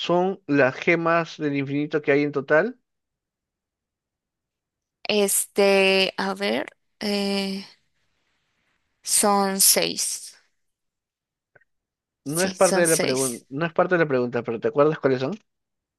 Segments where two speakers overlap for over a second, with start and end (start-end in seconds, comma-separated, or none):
12.2-13.4